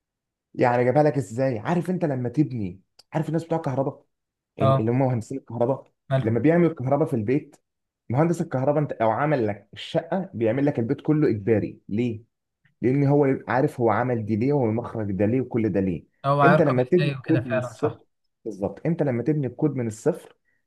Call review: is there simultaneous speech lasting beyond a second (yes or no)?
yes